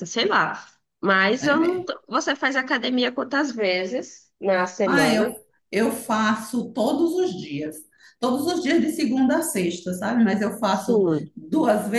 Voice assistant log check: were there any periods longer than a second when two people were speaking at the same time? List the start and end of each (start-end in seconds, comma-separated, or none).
none